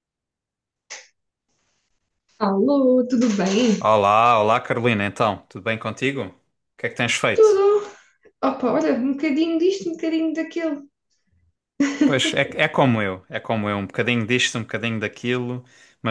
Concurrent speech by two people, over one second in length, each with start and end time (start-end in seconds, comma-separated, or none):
none